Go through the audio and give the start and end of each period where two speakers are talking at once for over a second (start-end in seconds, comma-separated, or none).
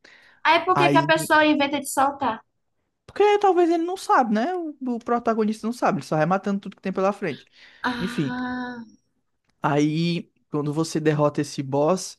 none